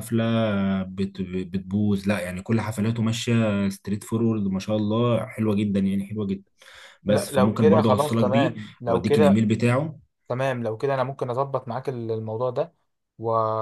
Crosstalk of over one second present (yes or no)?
yes